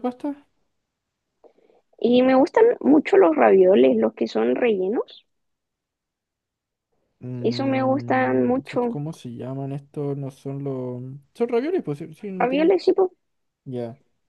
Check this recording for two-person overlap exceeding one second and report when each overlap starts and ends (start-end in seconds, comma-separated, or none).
7.4-9.0